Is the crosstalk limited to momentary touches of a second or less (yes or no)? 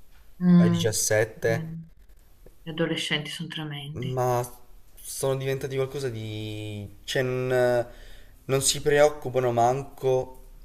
yes